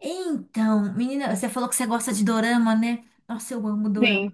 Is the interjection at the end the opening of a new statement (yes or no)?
no